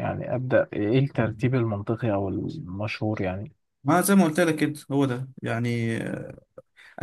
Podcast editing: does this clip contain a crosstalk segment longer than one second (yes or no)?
no